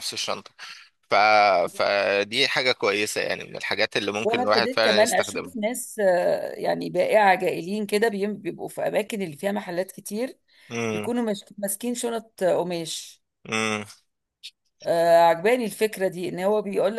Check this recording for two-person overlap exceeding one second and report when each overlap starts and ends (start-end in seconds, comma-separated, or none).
4.2-5.5